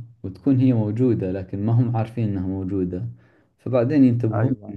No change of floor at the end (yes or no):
yes